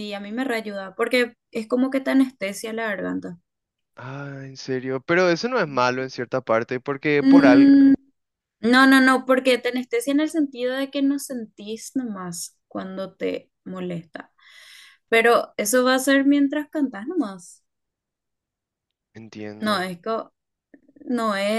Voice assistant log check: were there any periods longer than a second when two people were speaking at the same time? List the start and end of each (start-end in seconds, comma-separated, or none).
none